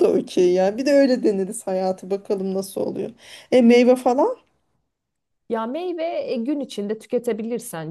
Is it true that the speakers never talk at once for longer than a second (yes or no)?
yes